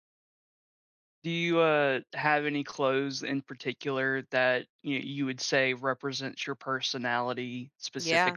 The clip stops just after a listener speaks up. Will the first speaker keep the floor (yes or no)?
no